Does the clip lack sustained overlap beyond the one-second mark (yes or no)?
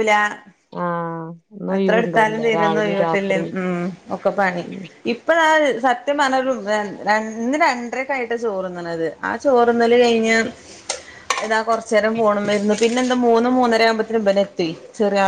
no